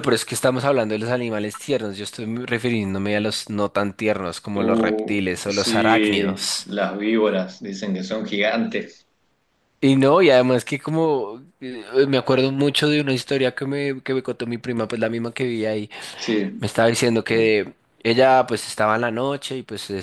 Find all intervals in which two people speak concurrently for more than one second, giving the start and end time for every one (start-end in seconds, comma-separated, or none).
4.6-6.7